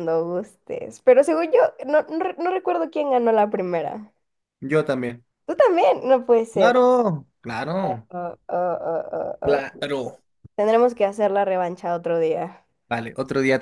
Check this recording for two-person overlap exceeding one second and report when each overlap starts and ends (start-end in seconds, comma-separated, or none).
none